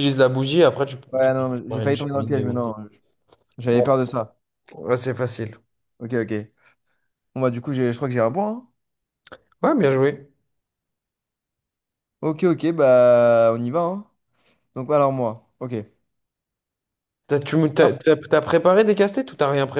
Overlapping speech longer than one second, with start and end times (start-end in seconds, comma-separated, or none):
1.1-2.7